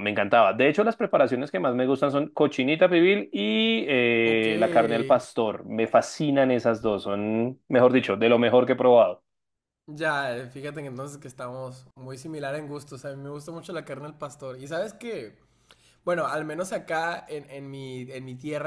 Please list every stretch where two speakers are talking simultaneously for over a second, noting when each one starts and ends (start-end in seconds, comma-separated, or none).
none